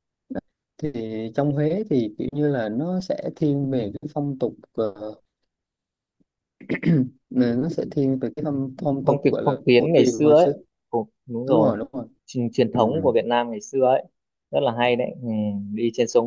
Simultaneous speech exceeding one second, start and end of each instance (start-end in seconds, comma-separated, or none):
9.0-10.5